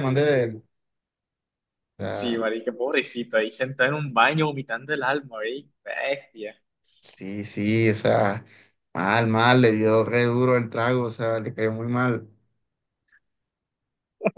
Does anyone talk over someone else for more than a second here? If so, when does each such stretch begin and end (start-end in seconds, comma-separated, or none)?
none